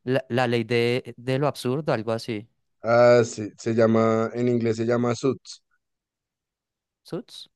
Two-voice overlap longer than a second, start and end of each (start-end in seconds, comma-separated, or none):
none